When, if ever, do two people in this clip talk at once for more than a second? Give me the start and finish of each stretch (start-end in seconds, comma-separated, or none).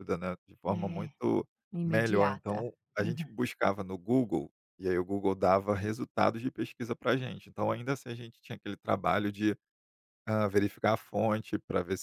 1.9-3.3